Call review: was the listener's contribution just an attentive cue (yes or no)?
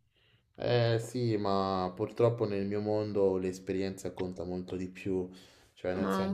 yes